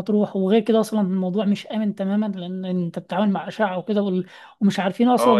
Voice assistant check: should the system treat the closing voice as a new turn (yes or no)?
yes